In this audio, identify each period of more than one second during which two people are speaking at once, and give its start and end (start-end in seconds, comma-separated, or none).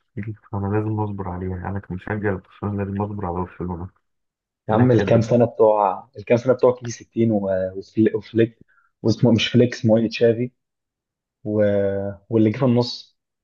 none